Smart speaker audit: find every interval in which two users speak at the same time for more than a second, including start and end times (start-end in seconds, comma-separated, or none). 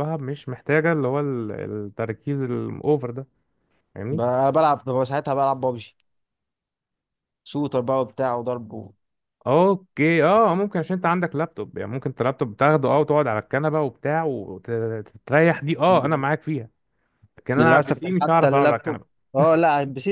17.6-19.2